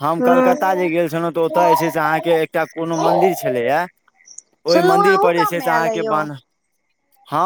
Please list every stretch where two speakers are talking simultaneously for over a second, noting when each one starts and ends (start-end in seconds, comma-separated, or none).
4.7-6.2